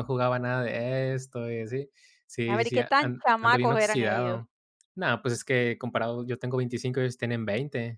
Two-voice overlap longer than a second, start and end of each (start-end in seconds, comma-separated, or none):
2.5-4.4